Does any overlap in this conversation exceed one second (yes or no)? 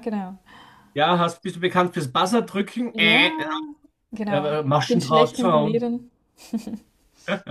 yes